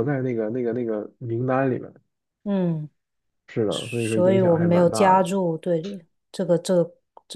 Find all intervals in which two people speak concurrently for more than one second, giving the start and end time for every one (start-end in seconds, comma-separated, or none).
3.7-5.3